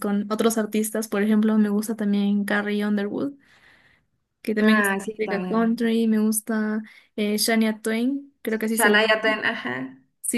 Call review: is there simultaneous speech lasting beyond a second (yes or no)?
yes